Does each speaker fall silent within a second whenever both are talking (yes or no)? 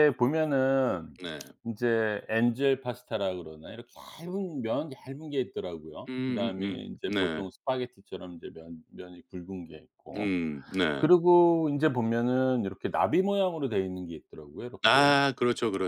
no